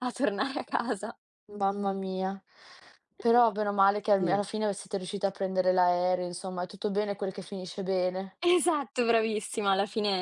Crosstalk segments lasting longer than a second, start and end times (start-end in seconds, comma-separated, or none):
none